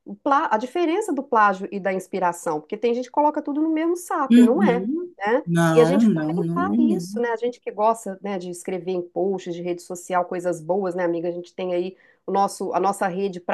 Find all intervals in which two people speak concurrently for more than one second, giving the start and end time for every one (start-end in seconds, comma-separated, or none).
4.3-7.2